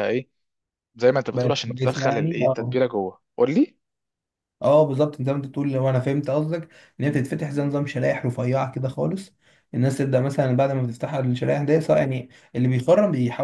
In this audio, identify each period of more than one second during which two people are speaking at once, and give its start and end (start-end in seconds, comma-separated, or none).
1.3-2.8